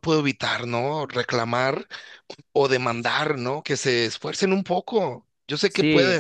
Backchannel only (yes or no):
no